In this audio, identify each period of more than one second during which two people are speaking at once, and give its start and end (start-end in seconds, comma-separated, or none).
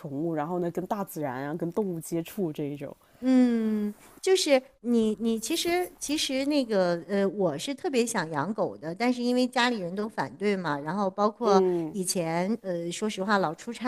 none